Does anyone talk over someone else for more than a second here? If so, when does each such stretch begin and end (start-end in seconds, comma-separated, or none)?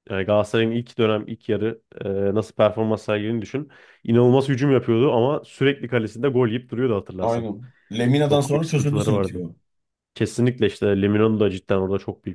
8.2-9.4